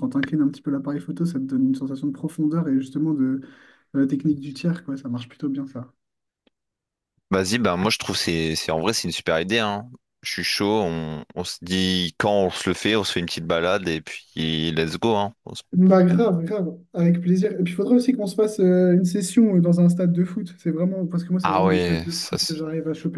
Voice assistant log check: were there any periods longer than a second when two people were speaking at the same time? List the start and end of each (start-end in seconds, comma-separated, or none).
21.4-22.6